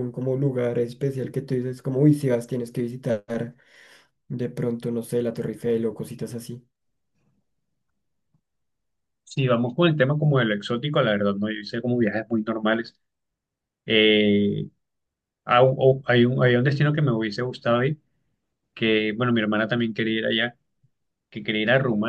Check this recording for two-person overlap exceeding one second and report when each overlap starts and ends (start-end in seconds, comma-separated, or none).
none